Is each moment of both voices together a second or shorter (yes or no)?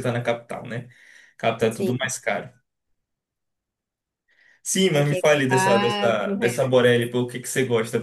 no